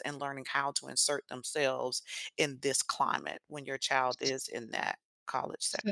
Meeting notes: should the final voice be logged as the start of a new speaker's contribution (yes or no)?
yes